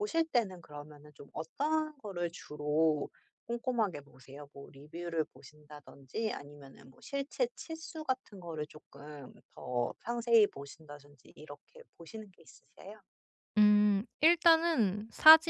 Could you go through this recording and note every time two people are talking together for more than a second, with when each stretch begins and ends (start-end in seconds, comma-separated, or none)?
none